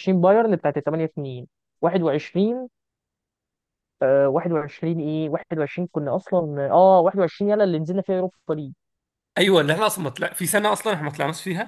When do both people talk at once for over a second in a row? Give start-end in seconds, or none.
none